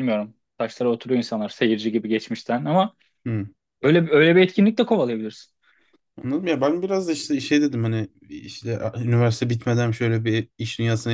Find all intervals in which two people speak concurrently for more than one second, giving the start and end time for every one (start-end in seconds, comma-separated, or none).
none